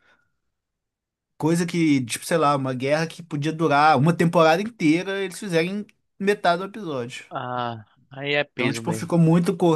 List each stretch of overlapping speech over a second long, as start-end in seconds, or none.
none